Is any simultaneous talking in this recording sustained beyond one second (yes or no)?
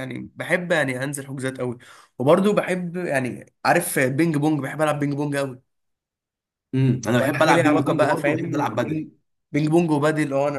yes